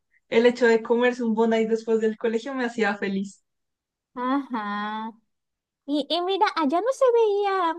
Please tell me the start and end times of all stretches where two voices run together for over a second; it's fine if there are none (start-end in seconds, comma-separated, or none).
none